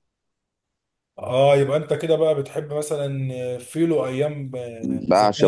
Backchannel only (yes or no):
no